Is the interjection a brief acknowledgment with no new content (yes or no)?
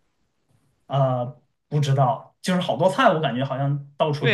no